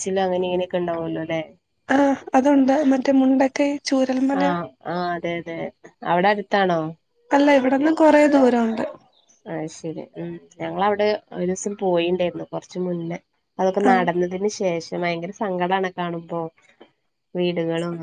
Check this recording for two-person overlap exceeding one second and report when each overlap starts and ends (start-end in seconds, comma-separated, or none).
none